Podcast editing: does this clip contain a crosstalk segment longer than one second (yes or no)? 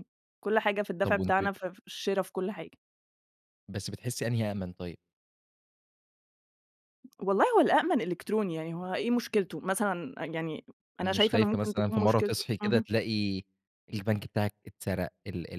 yes